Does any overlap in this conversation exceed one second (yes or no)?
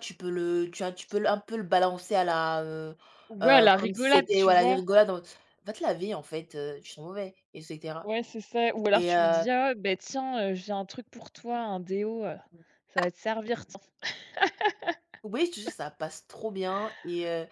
yes